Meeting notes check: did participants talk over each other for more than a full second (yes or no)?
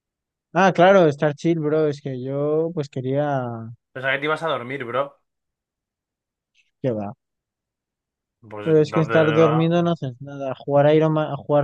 yes